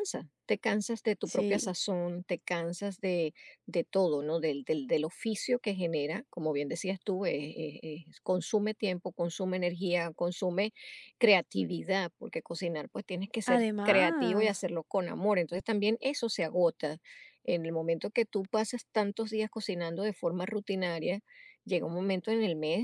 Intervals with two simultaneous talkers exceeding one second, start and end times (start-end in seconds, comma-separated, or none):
13.5-14.7